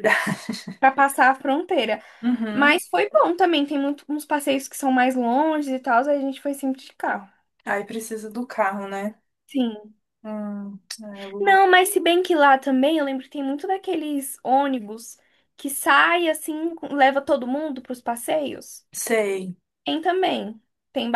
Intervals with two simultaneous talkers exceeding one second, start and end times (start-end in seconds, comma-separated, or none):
none